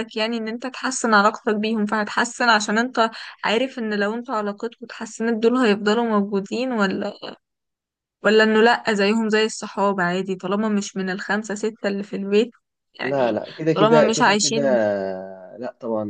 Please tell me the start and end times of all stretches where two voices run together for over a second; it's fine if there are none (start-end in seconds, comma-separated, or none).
13.0-14.6